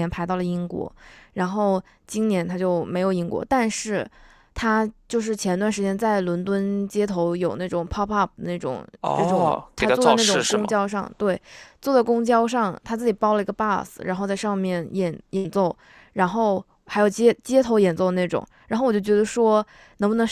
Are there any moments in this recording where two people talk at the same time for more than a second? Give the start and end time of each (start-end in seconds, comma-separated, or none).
9.0-10.8